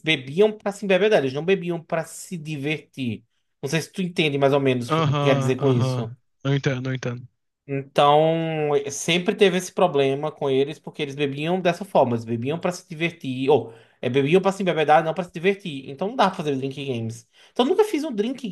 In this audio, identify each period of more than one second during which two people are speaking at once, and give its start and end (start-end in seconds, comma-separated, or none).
4.9-6.1